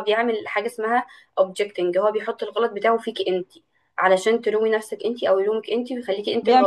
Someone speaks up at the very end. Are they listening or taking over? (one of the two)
taking over